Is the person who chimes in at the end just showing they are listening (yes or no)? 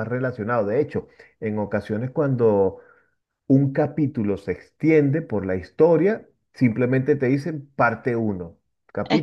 yes